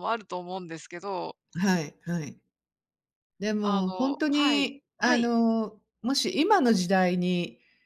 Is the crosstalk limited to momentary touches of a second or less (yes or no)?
no